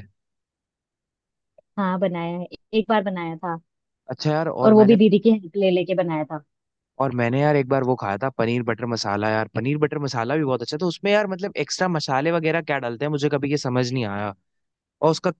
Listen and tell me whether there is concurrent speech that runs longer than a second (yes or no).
no